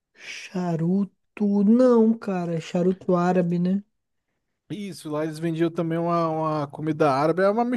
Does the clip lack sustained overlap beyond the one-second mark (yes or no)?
yes